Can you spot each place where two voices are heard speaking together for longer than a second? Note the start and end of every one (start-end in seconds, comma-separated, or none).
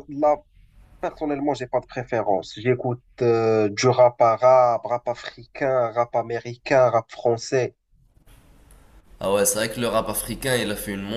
none